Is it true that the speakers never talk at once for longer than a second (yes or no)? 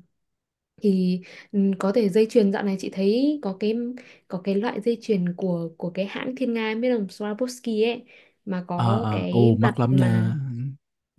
no